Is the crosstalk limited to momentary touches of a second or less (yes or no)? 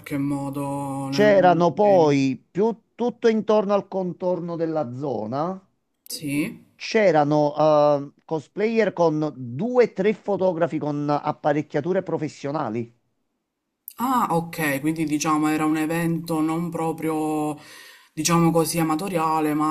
no